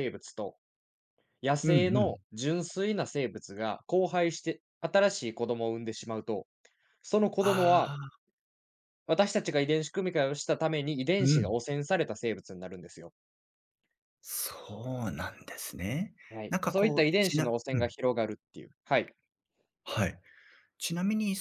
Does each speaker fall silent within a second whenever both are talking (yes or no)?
no